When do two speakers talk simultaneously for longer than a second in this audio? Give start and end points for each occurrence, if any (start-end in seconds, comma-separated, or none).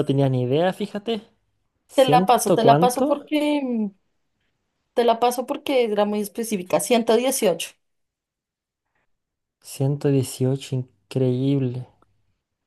1.9-3.3